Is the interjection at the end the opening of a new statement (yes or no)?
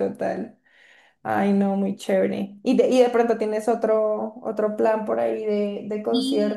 yes